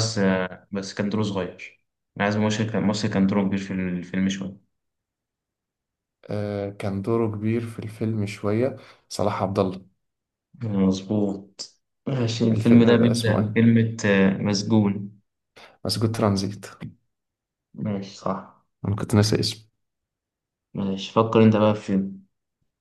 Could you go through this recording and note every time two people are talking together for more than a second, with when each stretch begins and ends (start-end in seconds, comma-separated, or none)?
12.5-13.7